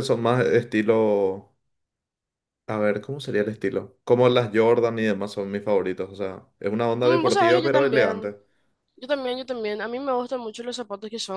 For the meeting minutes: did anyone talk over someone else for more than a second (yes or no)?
yes